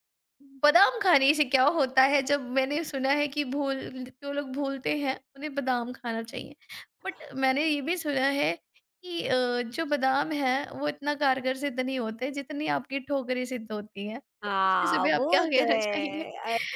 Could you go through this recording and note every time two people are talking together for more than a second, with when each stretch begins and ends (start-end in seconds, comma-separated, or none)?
14.4-16.2